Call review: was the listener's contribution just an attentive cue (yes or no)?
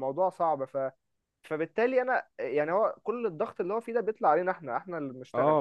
no